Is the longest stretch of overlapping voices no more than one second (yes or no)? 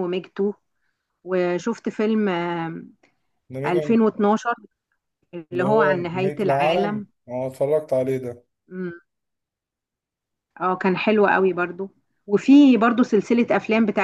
no